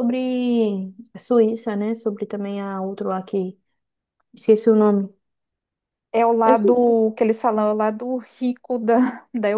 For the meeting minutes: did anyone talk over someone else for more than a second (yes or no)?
no